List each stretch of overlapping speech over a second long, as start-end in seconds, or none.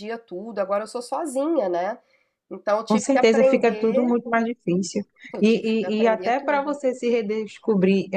2.9-4.2, 5.4-6.8